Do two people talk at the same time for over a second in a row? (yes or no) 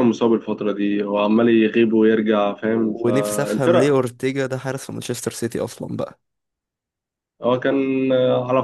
yes